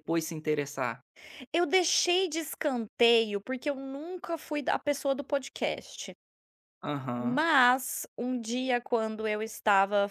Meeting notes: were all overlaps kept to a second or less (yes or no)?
yes